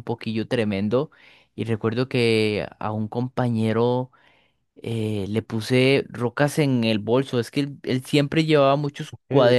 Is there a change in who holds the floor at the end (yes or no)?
no